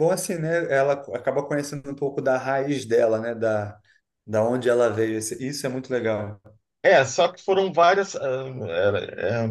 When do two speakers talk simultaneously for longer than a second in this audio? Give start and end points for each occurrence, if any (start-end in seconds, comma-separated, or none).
none